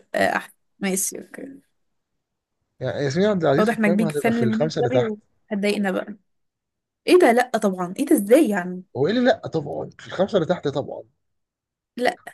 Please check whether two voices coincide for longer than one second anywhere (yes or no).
yes